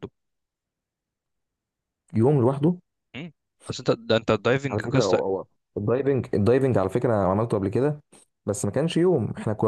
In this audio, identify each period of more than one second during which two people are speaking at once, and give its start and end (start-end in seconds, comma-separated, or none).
none